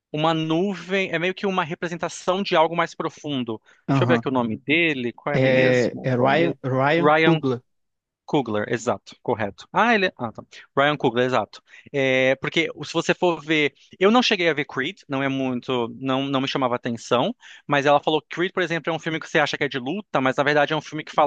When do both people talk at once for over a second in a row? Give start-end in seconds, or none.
5.3-6.6